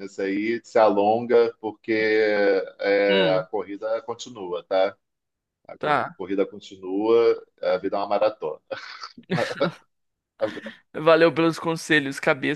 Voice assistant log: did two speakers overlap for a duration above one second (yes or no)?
no